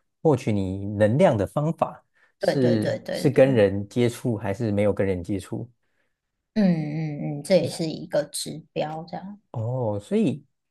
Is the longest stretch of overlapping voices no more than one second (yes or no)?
no